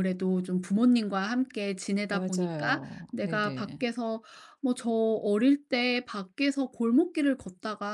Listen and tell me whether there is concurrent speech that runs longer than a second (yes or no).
yes